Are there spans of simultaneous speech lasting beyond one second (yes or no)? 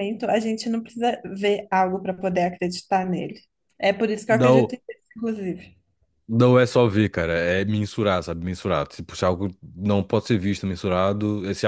no